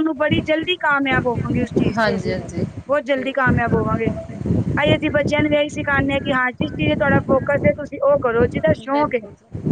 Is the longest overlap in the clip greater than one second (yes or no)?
no